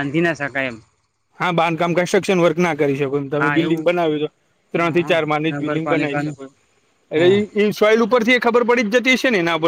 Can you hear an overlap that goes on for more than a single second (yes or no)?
yes